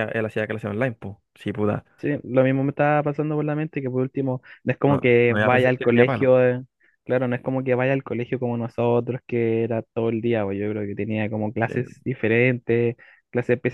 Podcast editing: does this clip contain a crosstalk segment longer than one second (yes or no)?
yes